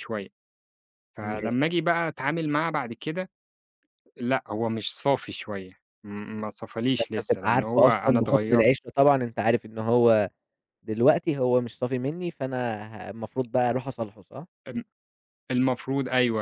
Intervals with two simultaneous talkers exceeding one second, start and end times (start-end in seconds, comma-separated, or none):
7.0-8.7